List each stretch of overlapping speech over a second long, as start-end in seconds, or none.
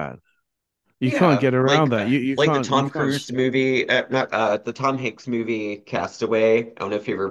1.1-3.5